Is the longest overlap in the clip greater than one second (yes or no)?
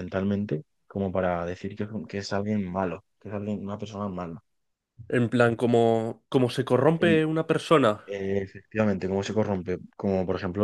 no